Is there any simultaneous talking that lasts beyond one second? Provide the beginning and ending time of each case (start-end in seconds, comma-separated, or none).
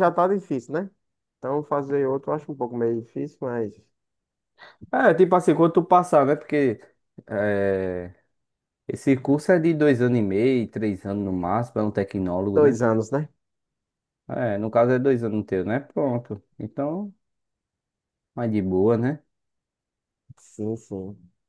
none